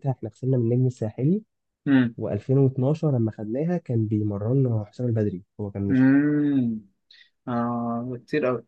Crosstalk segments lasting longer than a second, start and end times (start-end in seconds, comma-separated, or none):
none